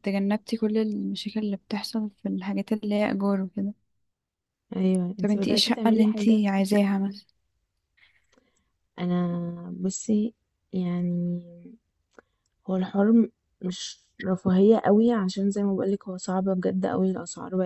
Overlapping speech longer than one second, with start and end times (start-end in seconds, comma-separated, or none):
5.2-6.4